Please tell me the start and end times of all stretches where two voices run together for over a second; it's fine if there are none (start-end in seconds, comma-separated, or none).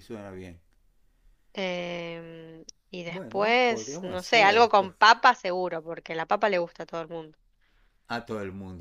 3.1-5.0